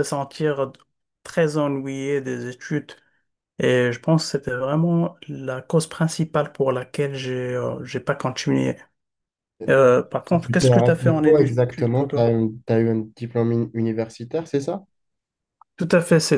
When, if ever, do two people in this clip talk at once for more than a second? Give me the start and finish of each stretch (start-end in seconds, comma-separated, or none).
10.4-12.3